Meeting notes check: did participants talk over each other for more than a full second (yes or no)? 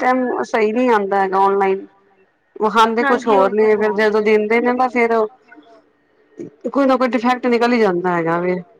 yes